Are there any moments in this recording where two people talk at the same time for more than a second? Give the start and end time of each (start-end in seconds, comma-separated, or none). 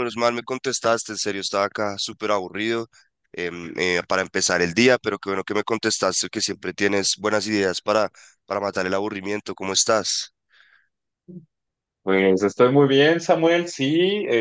none